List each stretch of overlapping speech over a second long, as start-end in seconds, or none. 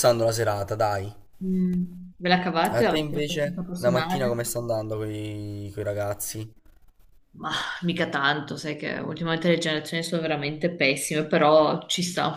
2.7-4.5